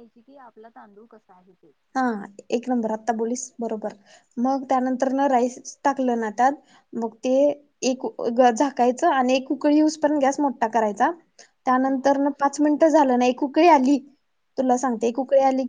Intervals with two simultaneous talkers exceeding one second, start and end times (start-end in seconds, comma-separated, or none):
none